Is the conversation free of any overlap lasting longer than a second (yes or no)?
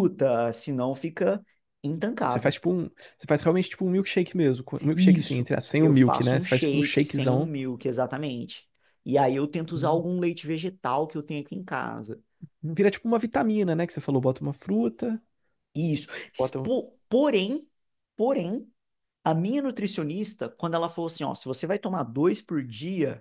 no